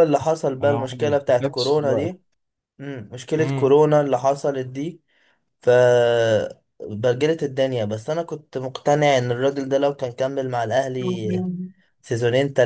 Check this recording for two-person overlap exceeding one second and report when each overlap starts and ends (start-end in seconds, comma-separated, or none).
0.6-2.1